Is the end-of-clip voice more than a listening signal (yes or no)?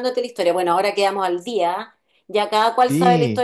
no